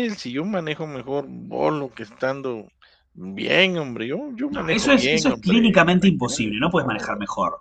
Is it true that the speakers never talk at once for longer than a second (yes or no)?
no